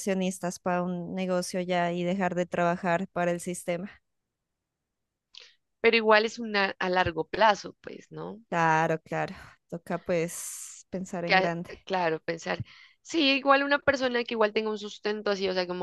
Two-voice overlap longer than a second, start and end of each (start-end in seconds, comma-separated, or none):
none